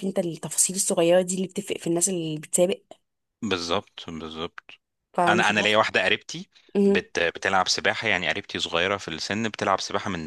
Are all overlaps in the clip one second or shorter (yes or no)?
yes